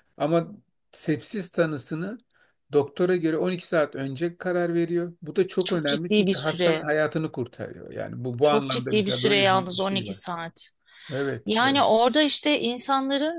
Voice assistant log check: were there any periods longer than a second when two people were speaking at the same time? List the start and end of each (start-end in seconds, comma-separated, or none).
5.7-6.9, 8.4-10.2